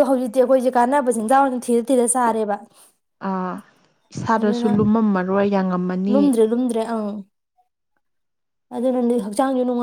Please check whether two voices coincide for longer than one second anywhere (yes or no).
no